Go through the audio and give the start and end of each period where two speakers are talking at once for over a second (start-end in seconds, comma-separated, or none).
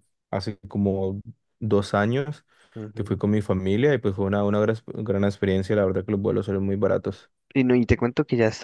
none